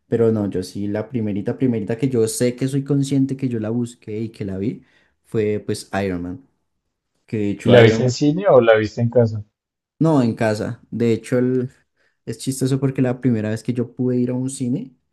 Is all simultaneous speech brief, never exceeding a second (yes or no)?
yes